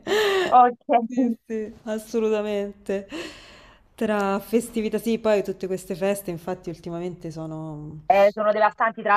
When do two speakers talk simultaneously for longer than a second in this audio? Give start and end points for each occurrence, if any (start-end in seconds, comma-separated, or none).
none